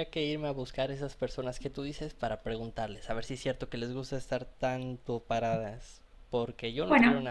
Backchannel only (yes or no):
yes